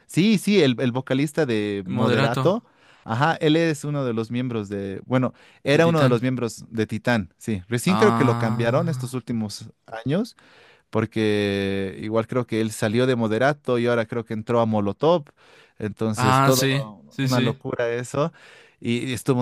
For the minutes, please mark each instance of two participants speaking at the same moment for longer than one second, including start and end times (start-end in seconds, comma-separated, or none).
7.9-9.1, 16.1-17.6